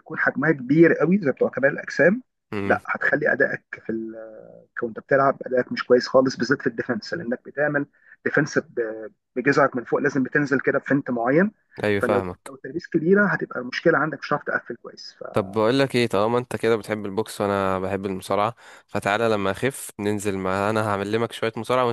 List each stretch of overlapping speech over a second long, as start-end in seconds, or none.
none